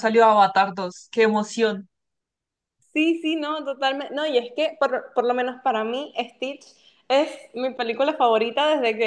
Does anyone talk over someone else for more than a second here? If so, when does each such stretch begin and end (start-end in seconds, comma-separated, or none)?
none